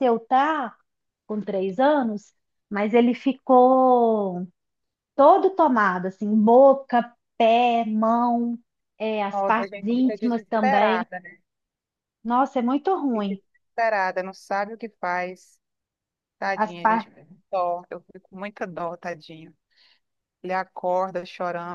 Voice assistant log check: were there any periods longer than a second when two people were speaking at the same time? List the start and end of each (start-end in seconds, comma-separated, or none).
9.3-11.1